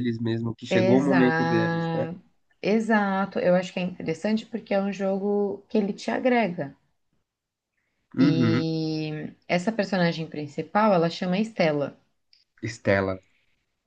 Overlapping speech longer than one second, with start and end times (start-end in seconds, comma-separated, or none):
0.7-2.1